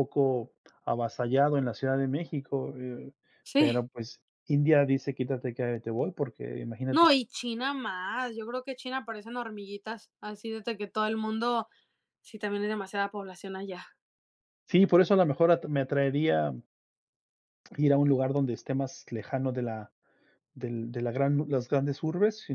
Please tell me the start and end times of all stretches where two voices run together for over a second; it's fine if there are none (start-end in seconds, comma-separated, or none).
none